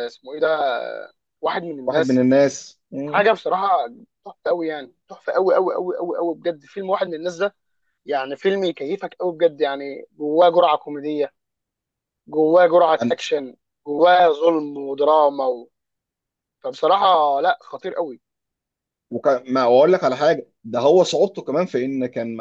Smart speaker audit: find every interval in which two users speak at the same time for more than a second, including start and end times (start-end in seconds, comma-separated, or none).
none